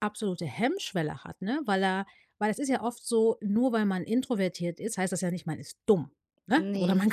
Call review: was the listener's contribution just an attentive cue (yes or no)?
yes